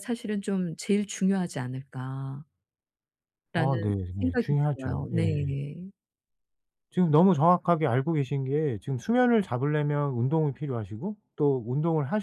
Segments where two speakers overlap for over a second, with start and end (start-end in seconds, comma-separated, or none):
3.5-5.5